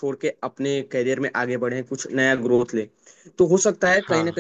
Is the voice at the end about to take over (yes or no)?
no